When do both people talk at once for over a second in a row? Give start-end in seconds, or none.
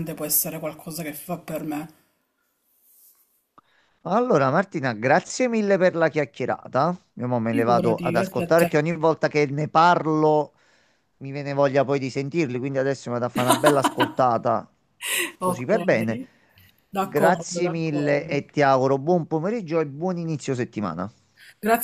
7.5-8.7, 17.0-18.4